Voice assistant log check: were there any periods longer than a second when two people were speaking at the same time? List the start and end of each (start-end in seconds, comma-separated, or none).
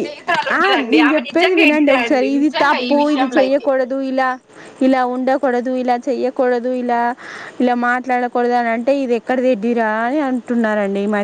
0.6-3.7